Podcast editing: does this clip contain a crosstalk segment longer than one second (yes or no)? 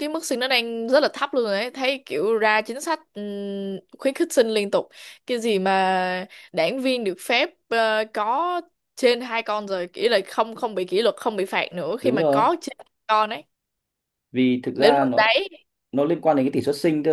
no